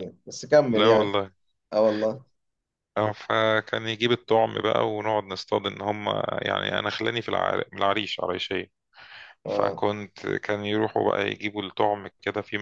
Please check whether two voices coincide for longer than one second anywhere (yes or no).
no